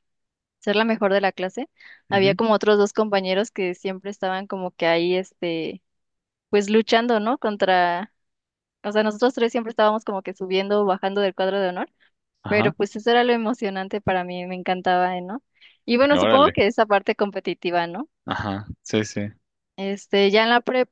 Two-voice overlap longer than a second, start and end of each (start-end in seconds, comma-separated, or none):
none